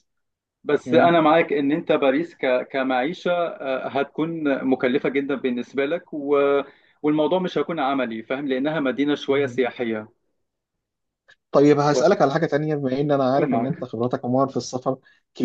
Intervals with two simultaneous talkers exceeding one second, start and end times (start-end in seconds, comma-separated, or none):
none